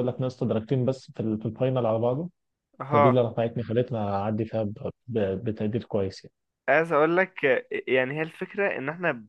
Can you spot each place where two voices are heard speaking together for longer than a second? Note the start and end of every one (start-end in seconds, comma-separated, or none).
none